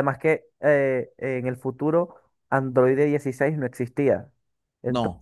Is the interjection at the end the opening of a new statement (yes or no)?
no